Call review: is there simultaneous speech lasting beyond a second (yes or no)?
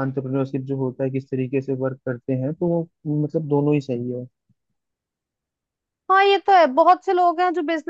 no